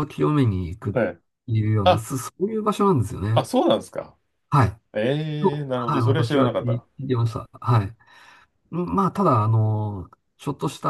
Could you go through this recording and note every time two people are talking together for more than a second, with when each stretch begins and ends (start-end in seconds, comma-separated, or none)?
5.4-6.8